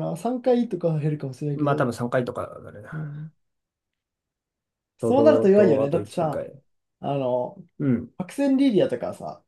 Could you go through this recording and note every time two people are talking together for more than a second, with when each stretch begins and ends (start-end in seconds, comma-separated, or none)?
5.0-6.5